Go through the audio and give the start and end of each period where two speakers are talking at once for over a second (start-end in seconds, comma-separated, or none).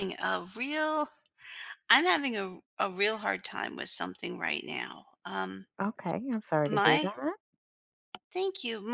none